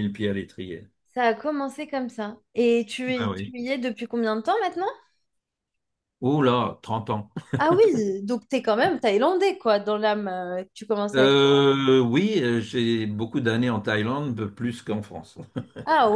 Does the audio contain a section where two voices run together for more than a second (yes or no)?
no